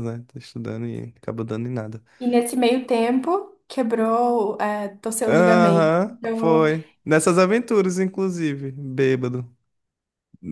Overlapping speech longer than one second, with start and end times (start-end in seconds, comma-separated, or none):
5.3-6.7